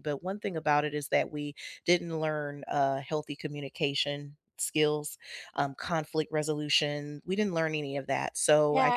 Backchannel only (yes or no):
no